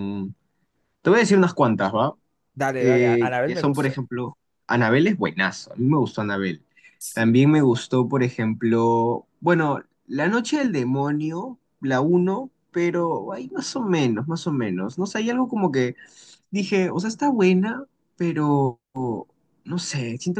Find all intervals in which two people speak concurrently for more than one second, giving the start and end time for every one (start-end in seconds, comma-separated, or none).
2.8-4.0